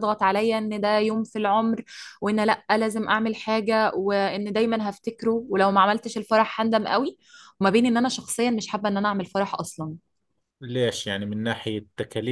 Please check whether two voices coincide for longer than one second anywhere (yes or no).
no